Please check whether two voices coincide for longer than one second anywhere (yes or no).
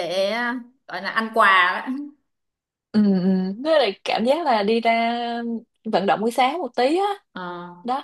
no